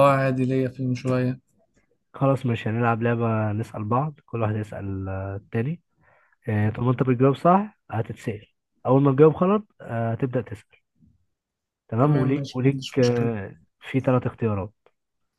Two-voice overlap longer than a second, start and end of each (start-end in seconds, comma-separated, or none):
12.0-13.3